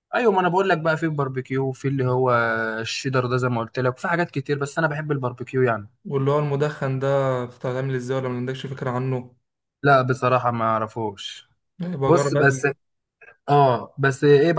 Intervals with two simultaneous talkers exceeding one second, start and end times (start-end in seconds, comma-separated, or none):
none